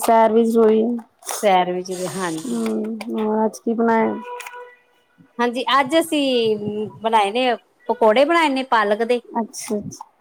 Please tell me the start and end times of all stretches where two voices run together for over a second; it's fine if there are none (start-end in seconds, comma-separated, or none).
none